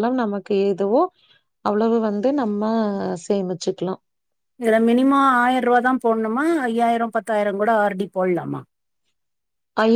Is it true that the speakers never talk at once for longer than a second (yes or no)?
yes